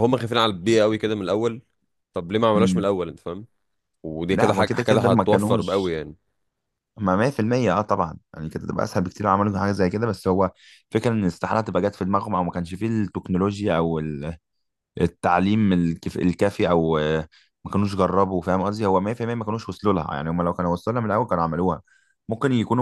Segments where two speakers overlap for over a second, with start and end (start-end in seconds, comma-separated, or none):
4.3-5.9